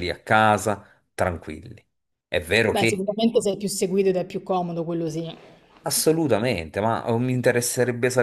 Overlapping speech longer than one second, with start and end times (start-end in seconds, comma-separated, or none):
none